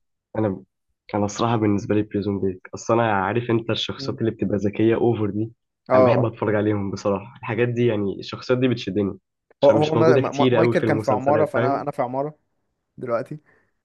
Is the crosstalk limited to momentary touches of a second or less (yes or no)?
no